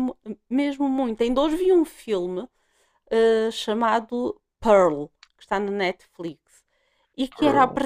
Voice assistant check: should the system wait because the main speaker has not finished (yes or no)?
yes